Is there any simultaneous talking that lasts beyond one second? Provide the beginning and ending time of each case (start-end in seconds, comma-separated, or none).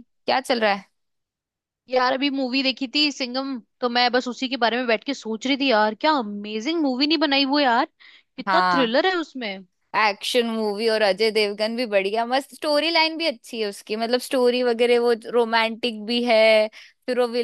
none